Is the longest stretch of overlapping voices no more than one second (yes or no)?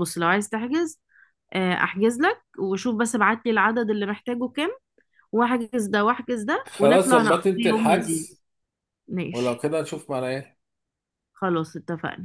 no